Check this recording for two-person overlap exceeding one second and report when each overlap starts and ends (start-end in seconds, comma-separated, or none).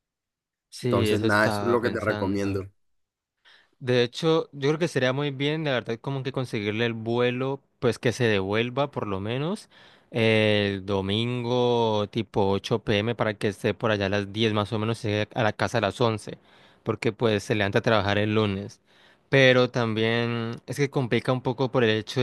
0.9-2.7